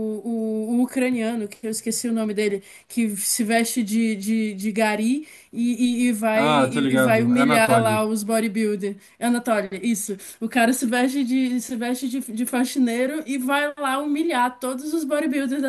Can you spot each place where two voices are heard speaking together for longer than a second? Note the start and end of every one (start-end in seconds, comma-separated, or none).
6.3-8.1